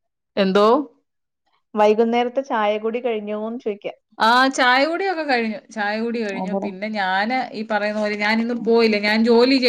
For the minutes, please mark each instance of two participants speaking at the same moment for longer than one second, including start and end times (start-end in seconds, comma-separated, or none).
none